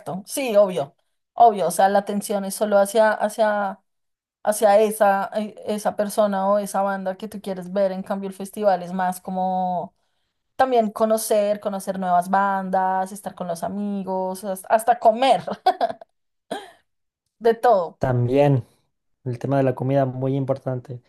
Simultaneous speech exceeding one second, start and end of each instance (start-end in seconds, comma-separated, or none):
none